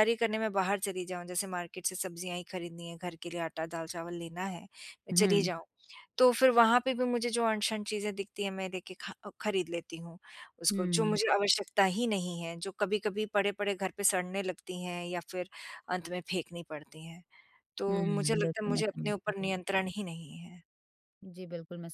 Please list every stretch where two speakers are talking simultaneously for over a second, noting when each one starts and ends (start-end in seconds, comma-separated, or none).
17.9-19.5